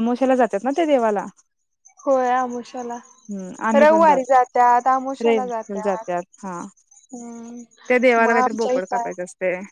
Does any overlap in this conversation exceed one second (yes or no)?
yes